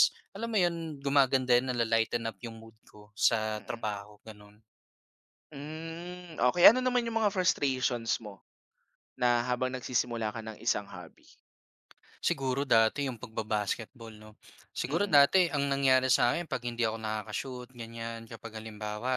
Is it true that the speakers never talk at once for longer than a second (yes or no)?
yes